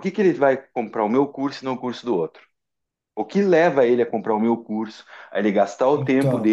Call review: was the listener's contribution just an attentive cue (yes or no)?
yes